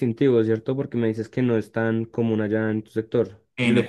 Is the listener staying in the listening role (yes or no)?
yes